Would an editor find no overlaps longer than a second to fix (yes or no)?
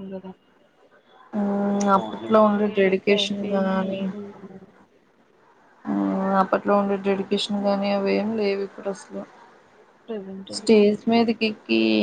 no